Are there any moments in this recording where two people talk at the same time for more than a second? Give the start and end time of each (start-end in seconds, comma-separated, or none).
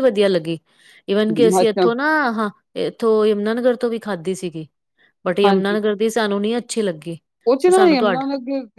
none